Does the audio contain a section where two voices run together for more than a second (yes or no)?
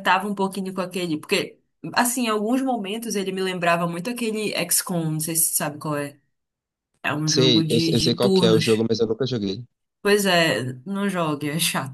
yes